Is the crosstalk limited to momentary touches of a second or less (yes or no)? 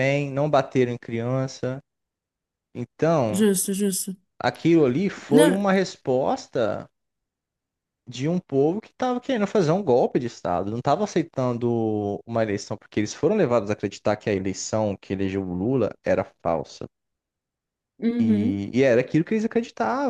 yes